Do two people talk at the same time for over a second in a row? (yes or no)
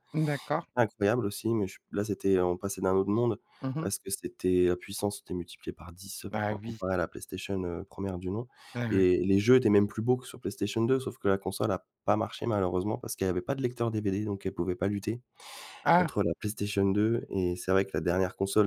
no